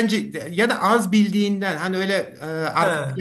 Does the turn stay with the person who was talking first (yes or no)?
yes